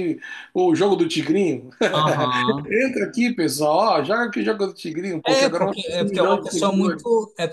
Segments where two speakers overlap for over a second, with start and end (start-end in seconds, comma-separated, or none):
5.3-7.0